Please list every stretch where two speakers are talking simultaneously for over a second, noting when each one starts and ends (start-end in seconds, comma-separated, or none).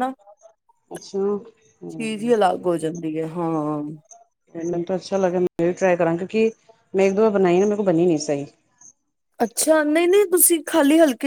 none